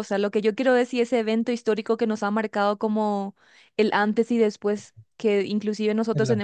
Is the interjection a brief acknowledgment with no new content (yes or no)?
yes